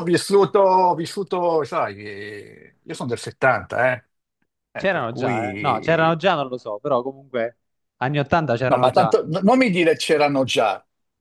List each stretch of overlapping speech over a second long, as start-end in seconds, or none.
4.8-6.2